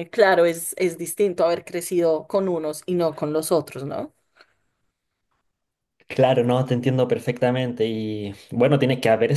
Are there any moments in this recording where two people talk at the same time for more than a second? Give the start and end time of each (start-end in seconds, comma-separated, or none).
none